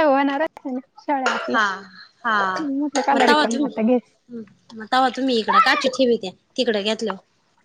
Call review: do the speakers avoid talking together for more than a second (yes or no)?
yes